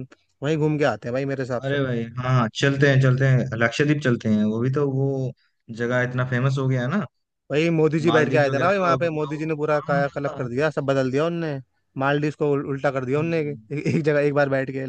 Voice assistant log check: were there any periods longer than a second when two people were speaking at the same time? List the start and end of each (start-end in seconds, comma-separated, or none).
8.1-10.5